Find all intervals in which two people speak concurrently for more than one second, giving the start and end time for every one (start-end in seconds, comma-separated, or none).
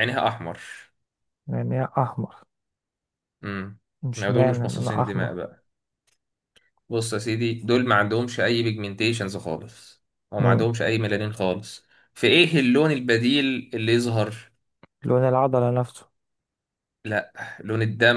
4.2-5.4